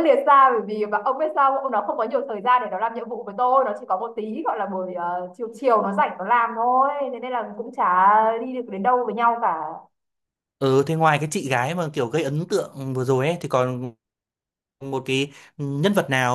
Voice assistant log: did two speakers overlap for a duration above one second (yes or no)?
no